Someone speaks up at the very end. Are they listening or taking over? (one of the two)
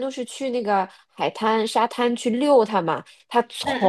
listening